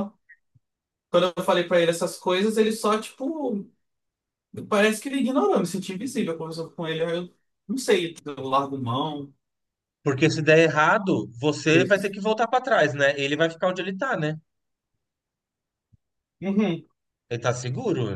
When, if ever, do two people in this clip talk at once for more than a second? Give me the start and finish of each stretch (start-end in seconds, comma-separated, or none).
none